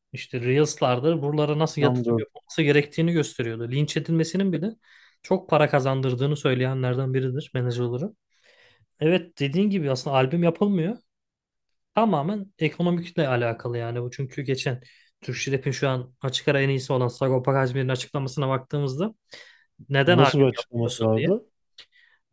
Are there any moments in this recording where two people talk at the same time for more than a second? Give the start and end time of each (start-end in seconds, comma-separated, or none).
20.1-21.3